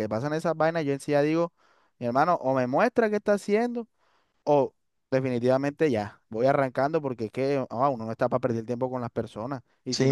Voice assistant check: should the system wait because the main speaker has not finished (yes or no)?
no